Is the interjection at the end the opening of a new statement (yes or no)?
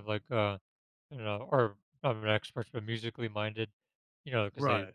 no